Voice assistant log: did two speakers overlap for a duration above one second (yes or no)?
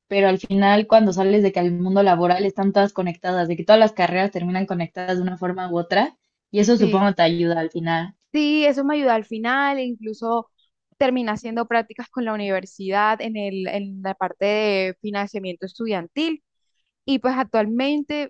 no